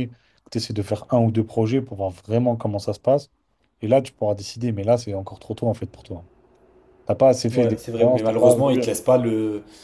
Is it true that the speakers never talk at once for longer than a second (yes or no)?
no